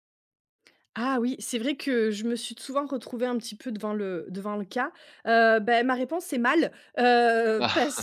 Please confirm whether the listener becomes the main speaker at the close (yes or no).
no